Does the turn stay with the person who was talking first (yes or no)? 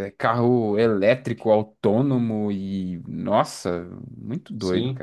no